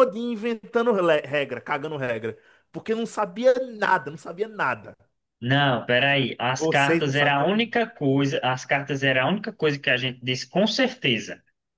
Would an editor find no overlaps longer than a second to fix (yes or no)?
no